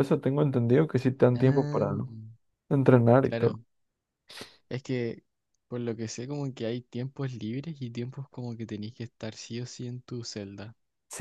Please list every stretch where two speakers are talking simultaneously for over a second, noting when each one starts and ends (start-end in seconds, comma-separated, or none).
none